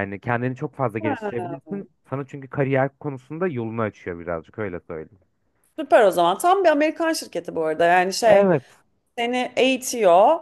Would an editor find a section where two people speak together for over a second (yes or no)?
no